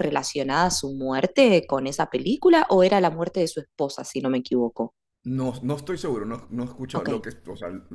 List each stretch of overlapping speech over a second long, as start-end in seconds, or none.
none